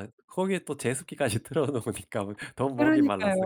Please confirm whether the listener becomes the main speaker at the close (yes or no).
yes